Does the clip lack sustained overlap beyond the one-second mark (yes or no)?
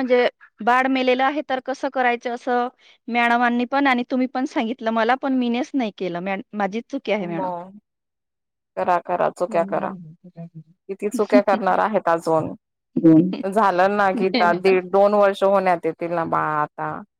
yes